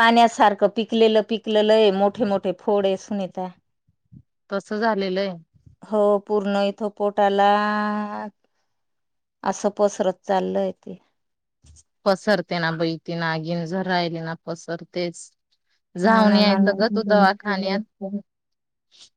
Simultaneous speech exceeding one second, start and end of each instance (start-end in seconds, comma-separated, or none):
16.1-17.6